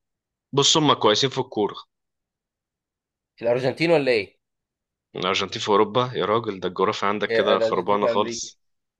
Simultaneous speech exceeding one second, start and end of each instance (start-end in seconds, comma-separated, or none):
7.2-8.5